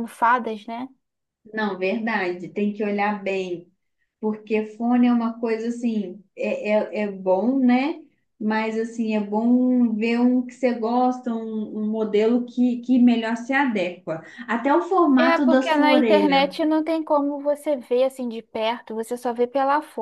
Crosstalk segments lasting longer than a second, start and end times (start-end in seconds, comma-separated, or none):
15.2-16.6